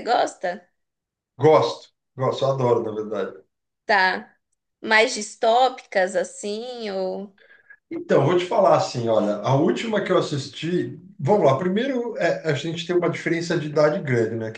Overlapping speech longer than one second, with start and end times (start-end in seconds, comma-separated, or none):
none